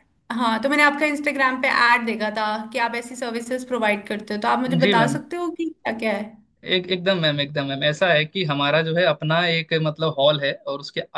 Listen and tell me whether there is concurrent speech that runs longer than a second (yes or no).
no